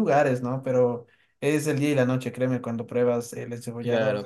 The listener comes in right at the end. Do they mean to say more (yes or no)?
yes